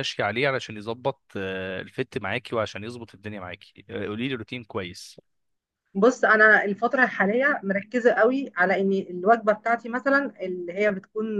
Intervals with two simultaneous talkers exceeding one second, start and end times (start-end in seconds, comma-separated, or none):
none